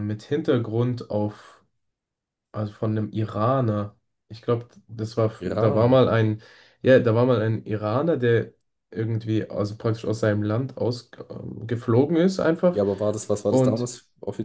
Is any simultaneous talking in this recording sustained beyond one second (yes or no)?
no